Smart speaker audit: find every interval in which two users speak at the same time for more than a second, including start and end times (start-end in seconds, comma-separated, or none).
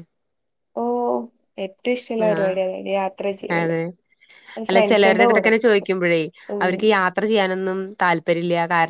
none